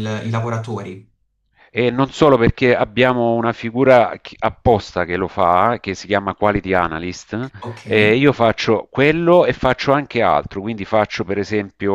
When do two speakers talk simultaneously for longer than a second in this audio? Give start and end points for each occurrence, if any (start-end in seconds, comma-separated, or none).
none